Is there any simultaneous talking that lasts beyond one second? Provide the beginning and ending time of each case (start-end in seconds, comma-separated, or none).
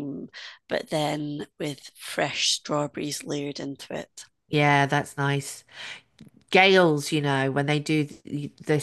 none